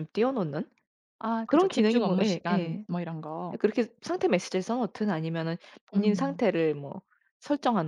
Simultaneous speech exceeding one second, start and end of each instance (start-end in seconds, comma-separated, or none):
1.5-2.9